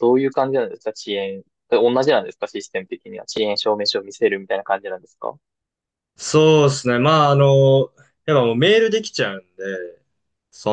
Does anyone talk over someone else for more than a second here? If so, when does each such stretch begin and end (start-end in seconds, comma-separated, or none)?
none